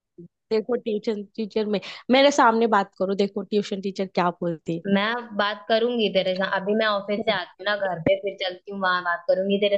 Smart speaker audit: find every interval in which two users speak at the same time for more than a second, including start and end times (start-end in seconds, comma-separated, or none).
none